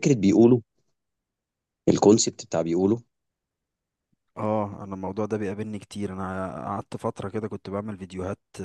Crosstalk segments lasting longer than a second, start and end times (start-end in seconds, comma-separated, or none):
none